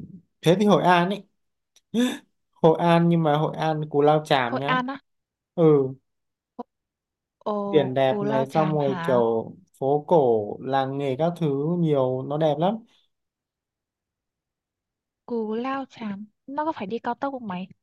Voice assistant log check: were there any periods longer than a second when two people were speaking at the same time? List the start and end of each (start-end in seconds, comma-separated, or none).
7.7-9.2